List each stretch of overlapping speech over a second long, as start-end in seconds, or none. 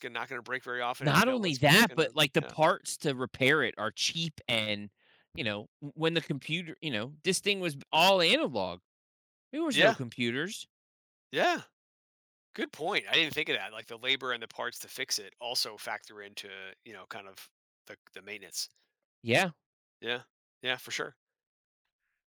1.0-2.5